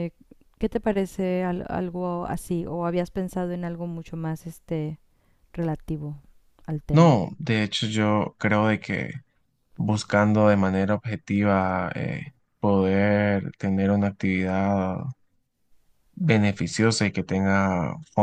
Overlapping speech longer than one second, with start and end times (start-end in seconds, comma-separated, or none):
none